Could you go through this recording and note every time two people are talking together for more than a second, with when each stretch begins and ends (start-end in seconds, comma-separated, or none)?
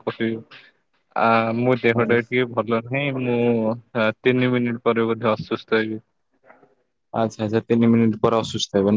none